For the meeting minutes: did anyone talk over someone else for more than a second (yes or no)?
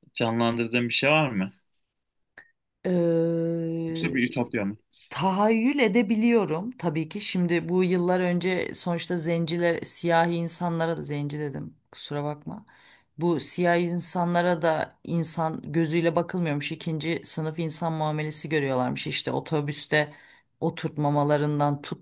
no